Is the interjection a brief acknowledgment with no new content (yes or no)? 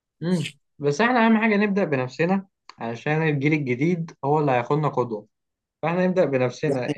yes